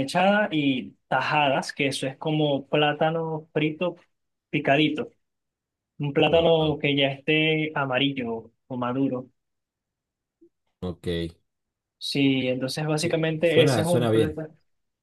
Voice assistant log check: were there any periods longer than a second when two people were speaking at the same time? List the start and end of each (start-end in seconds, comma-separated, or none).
13.0-14.4